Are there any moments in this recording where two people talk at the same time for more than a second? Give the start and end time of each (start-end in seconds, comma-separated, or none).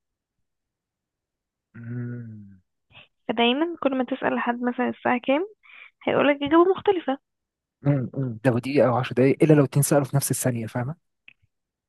none